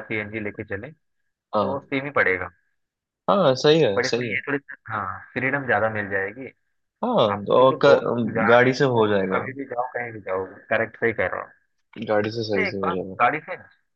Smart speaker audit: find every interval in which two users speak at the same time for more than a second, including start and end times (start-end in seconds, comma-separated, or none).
7.3-9.4